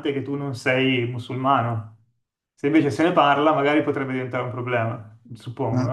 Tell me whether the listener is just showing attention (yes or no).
no